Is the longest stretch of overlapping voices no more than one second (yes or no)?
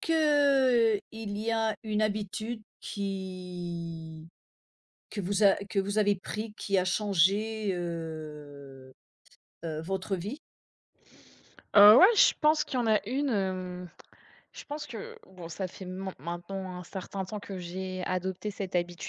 yes